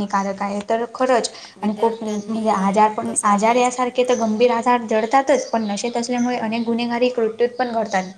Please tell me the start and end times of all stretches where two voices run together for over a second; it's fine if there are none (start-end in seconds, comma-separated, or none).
1.6-3.6